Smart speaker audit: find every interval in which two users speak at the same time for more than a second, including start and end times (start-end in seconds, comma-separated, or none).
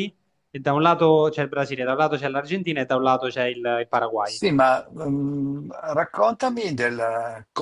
none